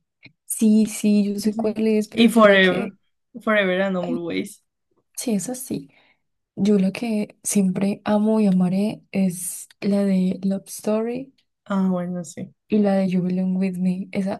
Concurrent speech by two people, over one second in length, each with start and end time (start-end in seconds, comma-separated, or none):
1.5-2.9